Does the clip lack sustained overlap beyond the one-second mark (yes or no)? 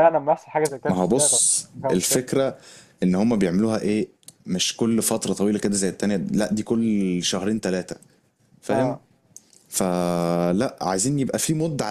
no